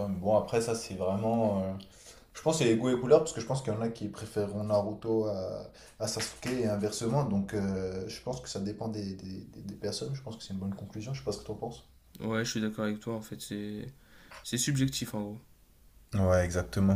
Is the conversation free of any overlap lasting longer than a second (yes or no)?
yes